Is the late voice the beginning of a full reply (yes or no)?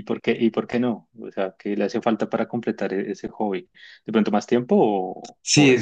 yes